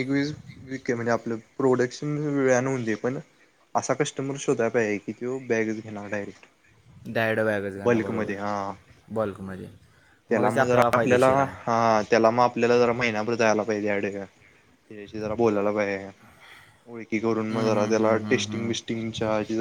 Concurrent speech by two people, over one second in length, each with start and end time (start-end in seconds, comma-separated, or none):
17.5-18.9